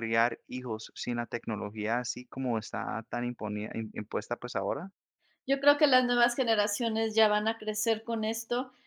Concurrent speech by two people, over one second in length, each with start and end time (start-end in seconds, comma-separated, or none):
none